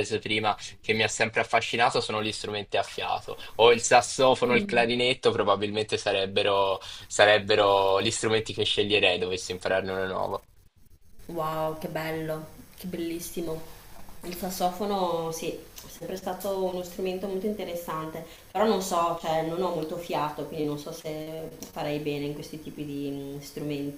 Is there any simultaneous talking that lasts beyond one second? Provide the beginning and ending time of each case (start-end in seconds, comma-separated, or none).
none